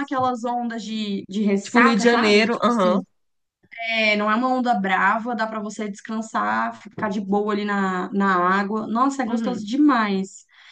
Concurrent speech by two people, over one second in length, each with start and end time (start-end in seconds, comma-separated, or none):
1.6-3.0